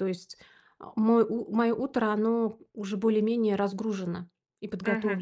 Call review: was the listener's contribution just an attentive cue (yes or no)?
no